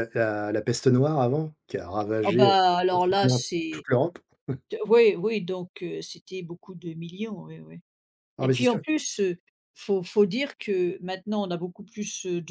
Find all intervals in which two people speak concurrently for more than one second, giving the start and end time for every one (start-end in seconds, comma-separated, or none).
2.2-3.9